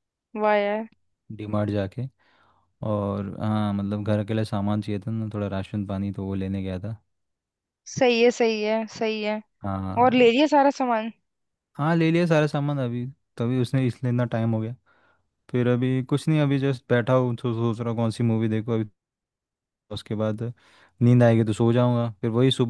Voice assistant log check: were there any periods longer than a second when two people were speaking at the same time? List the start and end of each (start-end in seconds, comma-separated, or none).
none